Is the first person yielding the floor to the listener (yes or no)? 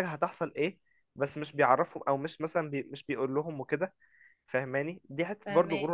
no